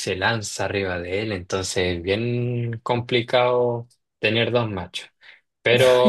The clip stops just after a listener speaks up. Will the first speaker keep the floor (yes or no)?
yes